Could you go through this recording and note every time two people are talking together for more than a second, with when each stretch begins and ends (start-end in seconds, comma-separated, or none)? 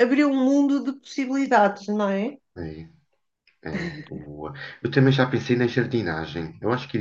none